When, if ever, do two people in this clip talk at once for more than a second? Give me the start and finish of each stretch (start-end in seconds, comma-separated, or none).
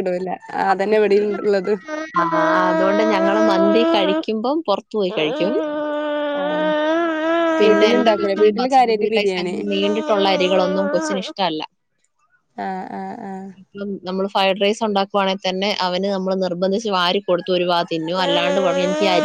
7.6-9.6